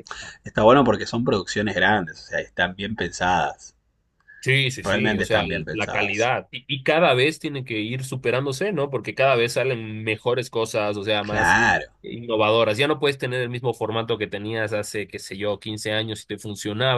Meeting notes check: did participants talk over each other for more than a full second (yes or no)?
yes